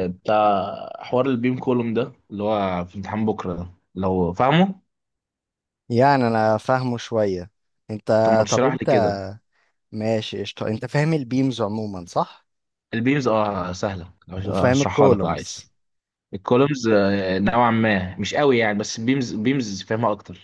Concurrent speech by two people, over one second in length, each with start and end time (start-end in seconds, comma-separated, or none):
14.4-15.7